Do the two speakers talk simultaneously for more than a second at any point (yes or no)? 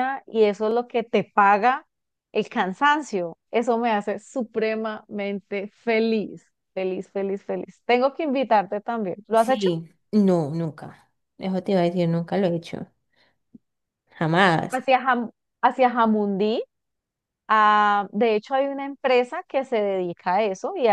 no